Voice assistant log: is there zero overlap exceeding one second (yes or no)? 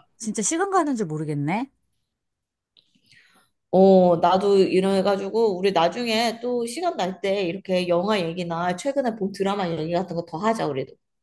yes